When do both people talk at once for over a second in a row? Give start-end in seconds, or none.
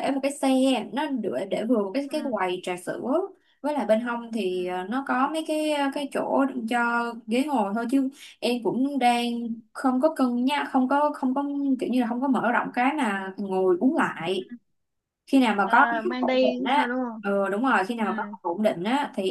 15.6-17.2